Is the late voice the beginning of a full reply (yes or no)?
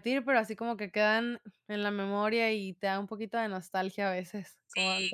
yes